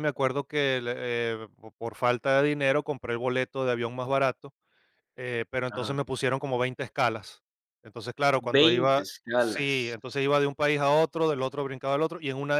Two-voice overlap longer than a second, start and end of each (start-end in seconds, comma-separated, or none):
8.6-9.9